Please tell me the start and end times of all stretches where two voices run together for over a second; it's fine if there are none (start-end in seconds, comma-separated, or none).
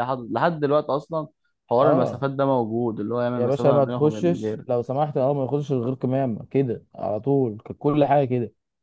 3.4-4.7